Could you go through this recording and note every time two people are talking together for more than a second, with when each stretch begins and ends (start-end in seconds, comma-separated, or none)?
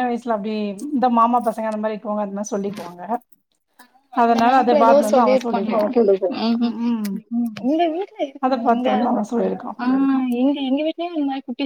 4.2-5.9